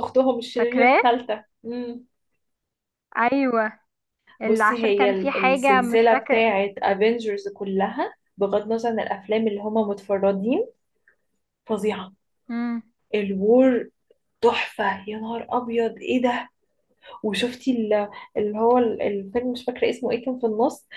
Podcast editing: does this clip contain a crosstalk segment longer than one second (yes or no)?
yes